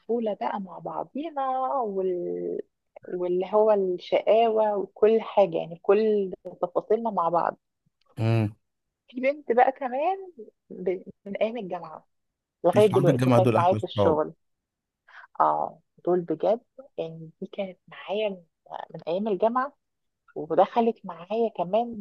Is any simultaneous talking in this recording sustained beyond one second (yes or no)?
yes